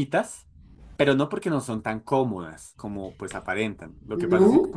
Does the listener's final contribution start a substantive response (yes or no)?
no